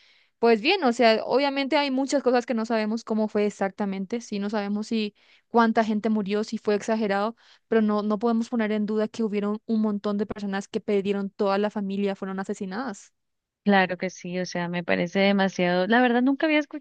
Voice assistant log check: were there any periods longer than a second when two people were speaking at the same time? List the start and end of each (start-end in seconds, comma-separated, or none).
none